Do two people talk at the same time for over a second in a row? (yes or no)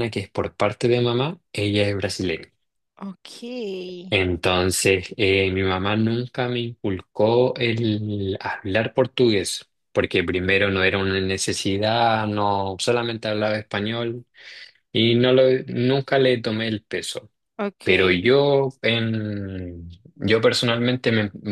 no